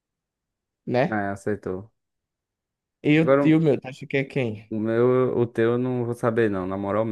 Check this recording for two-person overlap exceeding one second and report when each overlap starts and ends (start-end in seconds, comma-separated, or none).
none